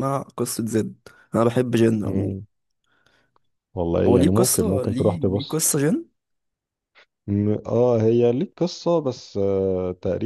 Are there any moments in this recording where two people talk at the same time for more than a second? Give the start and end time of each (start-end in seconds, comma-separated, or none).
4.1-5.6